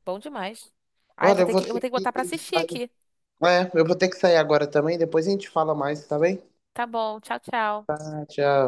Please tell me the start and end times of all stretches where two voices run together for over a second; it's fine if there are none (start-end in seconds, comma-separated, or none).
1.2-2.8